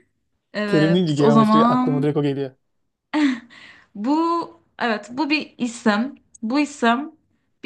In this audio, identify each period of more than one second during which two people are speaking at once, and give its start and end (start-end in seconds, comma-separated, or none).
0.7-2.1